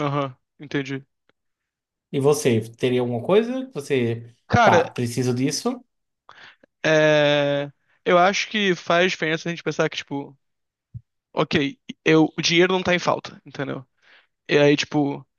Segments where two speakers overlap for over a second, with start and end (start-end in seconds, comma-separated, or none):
none